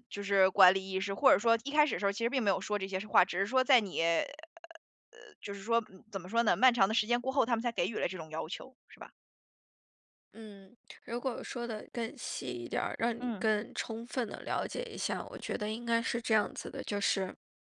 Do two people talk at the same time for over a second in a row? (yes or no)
no